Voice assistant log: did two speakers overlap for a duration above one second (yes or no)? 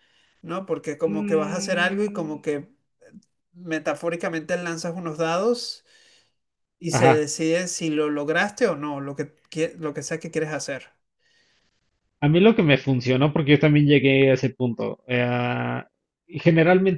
yes